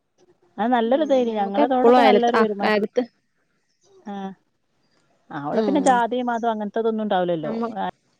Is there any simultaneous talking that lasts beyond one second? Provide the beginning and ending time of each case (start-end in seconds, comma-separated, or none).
0.9-2.9